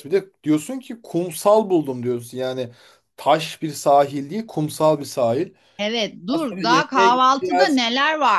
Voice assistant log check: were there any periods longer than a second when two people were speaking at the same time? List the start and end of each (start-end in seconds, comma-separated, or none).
6.3-7.8